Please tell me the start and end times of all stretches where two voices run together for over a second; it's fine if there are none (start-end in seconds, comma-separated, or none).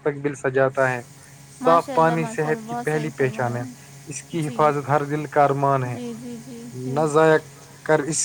1.6-3.6